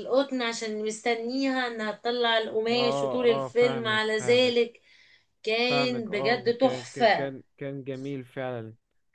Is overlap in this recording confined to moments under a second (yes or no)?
no